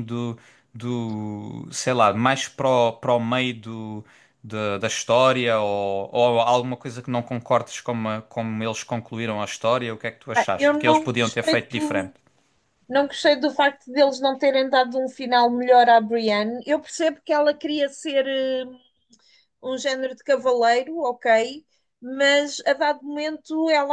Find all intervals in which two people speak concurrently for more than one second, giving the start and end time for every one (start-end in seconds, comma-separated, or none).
10.3-12.1